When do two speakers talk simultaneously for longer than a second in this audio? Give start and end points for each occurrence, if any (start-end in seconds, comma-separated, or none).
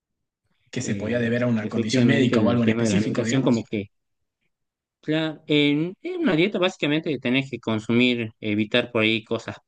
0.8-3.6